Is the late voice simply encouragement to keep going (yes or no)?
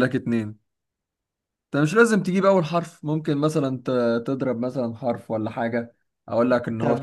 no